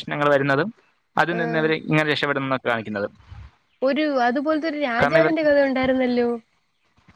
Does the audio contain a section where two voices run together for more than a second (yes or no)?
no